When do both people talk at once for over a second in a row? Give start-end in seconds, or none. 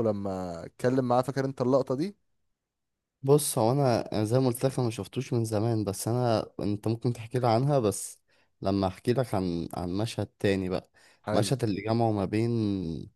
none